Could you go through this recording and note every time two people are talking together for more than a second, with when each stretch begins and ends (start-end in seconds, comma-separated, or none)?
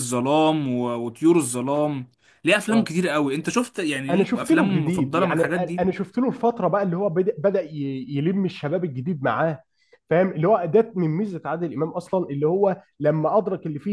4.1-5.8